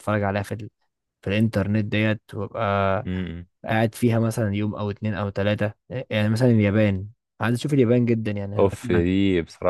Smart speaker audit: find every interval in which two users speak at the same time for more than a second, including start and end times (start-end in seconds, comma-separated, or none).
none